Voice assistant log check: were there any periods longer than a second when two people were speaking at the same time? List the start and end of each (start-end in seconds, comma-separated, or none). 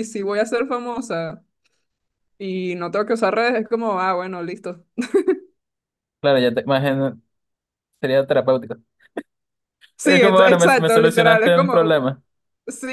10.0-12.0